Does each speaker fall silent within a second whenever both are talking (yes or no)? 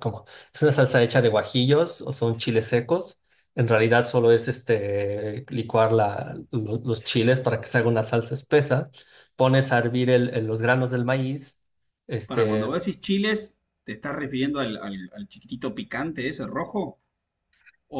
yes